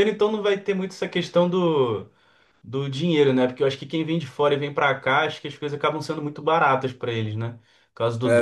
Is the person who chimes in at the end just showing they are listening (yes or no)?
no